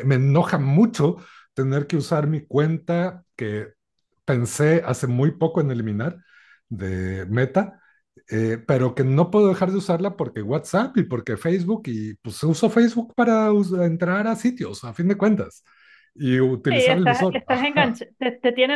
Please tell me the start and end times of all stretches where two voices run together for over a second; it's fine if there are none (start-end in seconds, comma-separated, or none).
16.7-18.0